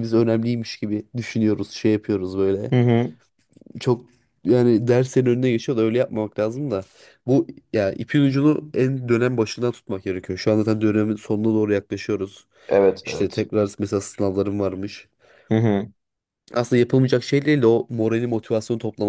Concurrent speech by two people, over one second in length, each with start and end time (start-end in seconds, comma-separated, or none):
none